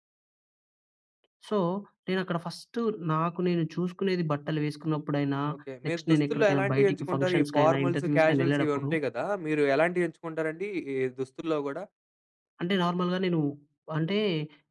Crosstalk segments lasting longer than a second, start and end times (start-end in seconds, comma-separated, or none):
5.9-8.9